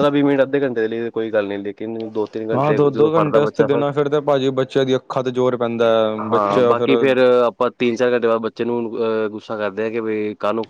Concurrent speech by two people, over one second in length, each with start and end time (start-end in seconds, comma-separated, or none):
2.5-3.9